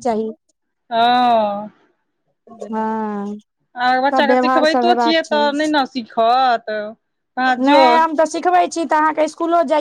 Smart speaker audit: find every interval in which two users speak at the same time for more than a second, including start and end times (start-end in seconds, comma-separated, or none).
4.1-5.5